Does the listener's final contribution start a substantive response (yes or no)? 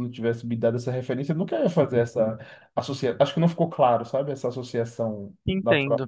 yes